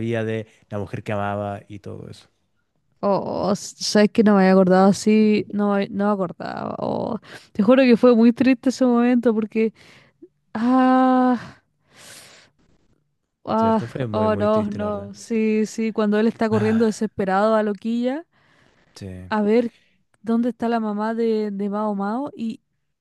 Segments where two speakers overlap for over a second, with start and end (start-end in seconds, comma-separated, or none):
13.6-15.1